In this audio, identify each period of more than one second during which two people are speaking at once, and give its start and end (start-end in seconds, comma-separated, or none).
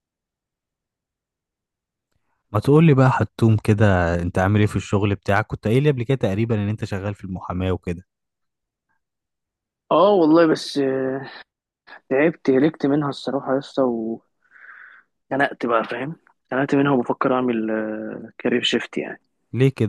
none